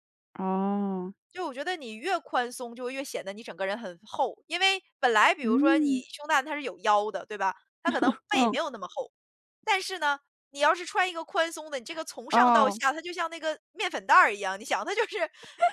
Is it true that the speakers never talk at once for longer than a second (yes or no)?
yes